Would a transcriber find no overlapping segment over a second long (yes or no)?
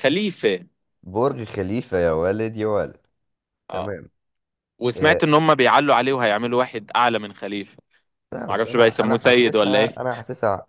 no